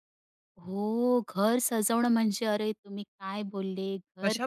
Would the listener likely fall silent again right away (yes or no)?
no